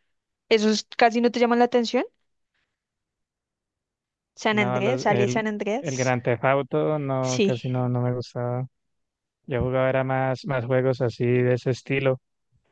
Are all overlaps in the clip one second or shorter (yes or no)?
no